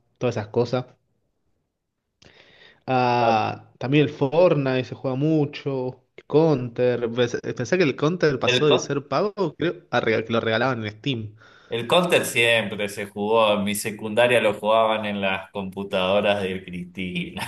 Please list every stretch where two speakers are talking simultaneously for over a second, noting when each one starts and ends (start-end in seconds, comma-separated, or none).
none